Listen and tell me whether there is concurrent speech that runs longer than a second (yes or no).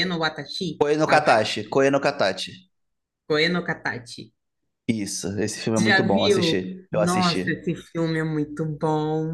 yes